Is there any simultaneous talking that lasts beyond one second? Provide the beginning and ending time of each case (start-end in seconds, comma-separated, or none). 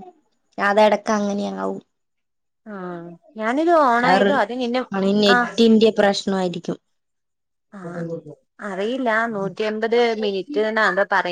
none